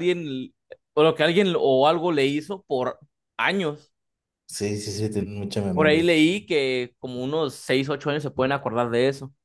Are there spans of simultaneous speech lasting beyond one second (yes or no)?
no